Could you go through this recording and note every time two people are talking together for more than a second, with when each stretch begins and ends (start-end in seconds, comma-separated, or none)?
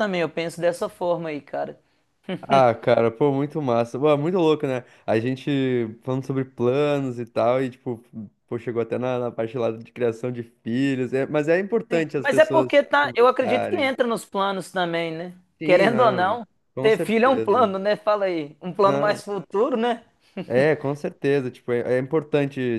11.9-13.9, 15.6-17.7